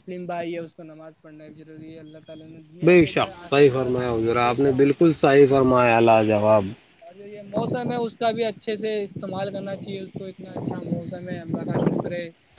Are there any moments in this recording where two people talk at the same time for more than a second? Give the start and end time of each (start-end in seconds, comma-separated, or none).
2.9-6.3